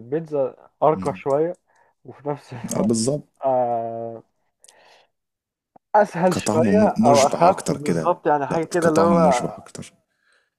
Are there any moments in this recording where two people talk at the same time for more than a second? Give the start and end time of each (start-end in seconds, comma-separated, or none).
6.3-9.4